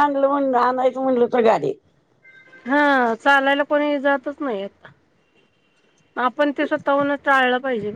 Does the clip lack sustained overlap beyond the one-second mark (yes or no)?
yes